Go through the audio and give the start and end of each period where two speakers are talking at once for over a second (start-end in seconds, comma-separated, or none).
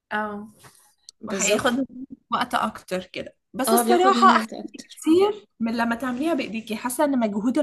3.7-5.0